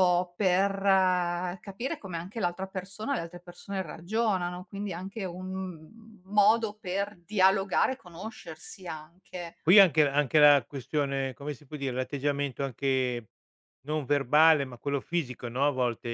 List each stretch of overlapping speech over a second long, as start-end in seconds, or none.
none